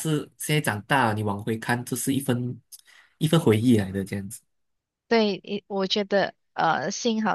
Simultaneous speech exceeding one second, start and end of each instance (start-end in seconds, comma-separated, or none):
none